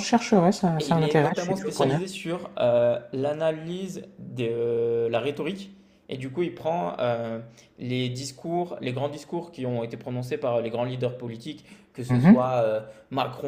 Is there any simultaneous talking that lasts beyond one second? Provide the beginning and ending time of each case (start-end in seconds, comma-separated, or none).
0.8-2.0